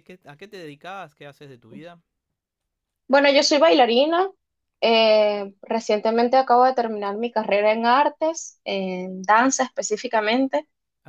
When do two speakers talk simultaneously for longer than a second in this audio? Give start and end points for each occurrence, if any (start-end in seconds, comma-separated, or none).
none